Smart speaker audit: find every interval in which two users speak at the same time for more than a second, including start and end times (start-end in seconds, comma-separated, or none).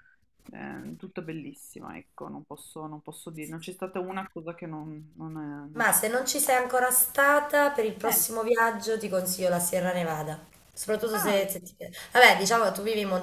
none